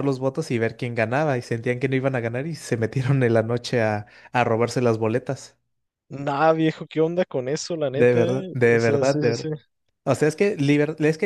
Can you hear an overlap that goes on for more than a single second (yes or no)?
yes